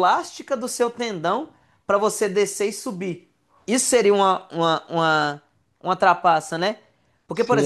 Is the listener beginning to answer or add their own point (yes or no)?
yes